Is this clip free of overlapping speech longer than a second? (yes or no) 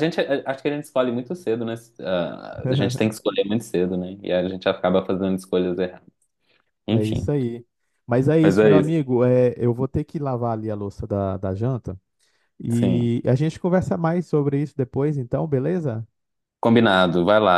yes